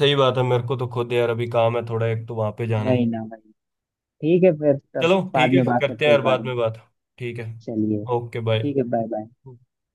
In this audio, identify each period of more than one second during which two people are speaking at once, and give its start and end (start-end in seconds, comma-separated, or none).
5.0-6.5